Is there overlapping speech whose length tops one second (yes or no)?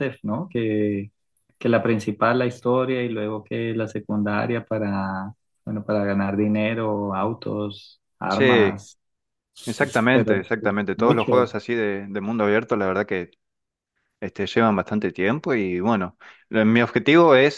yes